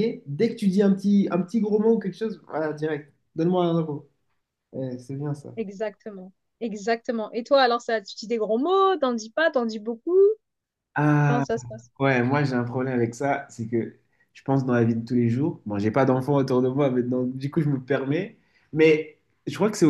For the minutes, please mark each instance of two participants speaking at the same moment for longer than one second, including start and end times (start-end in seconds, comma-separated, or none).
none